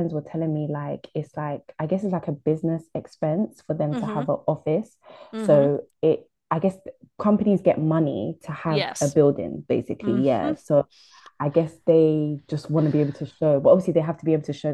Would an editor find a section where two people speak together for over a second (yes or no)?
no